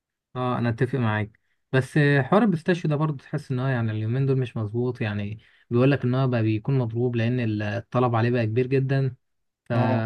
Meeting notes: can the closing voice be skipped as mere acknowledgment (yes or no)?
yes